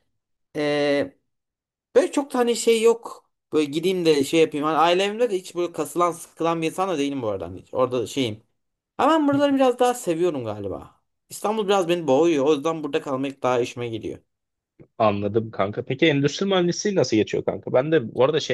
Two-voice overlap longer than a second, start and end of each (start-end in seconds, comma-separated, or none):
none